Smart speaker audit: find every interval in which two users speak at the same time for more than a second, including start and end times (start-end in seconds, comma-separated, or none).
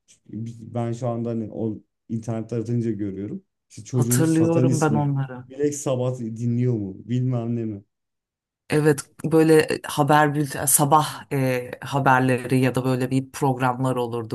3.9-5.4